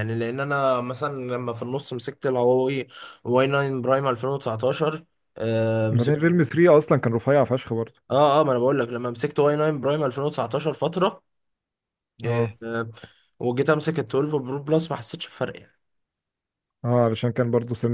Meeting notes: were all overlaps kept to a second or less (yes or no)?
yes